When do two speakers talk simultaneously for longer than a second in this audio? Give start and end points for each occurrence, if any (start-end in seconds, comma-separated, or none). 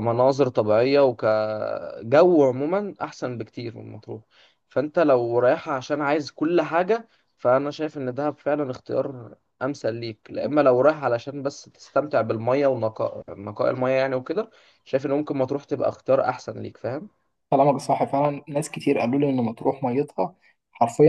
none